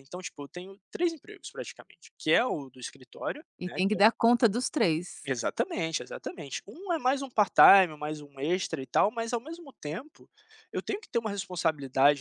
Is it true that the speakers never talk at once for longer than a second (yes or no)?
yes